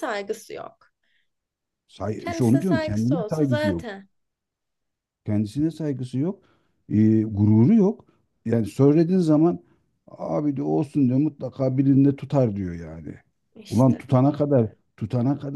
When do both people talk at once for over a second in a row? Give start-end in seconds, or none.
2.2-3.9